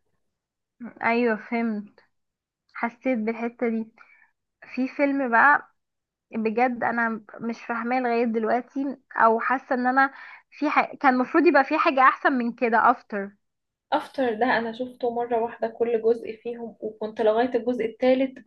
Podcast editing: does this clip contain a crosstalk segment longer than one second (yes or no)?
no